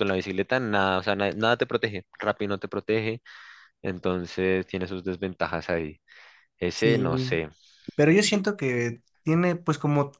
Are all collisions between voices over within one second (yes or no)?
yes